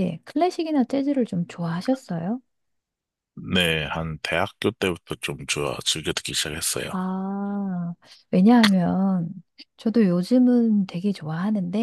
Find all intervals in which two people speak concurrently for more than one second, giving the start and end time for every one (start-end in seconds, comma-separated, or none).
none